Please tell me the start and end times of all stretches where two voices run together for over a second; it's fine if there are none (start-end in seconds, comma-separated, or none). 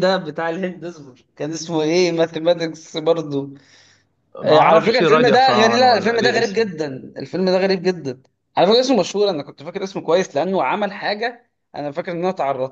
4.5-6.7